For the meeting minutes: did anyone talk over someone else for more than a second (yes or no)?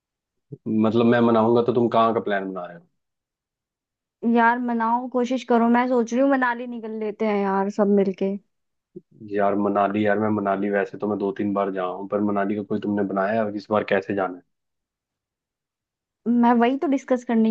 no